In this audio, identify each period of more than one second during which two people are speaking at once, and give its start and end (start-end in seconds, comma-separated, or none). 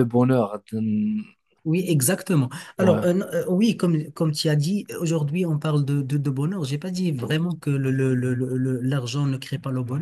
none